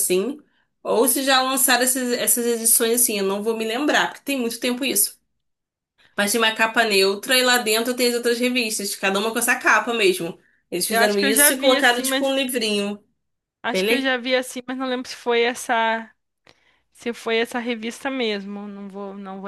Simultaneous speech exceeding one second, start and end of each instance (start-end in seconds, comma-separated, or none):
10.9-12.3